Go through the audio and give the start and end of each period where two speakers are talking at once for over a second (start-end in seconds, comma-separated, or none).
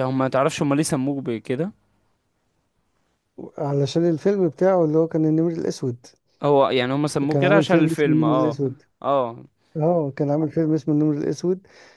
7.3-8.6